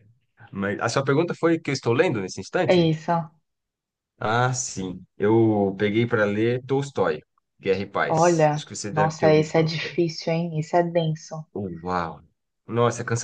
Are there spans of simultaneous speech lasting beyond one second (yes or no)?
yes